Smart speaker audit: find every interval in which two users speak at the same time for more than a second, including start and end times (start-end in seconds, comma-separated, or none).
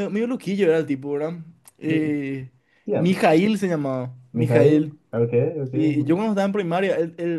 none